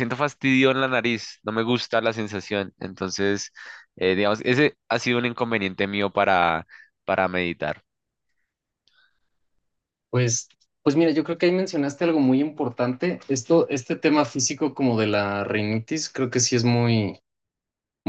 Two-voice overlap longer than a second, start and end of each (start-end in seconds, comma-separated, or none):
none